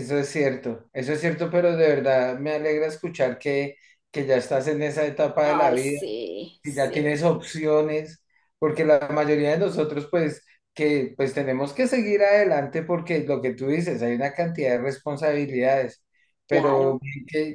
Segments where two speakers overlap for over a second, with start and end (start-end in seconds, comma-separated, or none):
none